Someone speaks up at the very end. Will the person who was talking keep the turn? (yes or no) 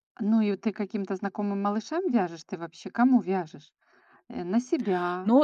no